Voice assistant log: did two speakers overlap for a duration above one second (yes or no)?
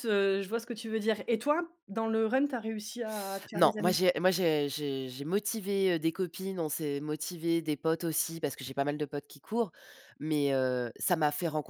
no